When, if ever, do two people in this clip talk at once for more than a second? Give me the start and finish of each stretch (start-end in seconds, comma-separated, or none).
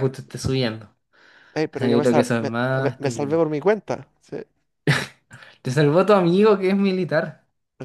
1.7-3.4